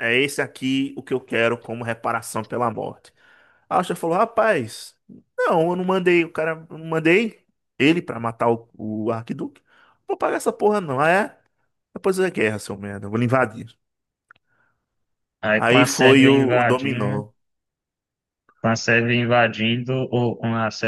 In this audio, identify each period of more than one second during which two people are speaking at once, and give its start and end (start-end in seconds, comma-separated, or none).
15.6-17.3